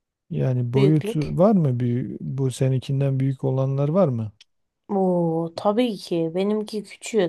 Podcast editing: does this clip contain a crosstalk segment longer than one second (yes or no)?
no